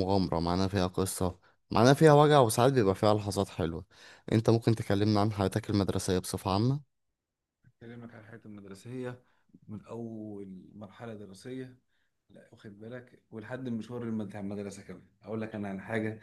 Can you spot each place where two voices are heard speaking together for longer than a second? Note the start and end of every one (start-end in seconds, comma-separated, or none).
none